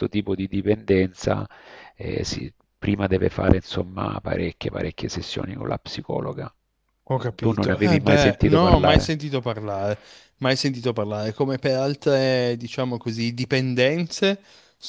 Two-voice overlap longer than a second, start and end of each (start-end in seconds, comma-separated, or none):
7.3-9.1